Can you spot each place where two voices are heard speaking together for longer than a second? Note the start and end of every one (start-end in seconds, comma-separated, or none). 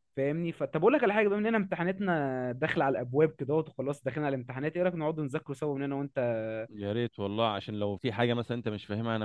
none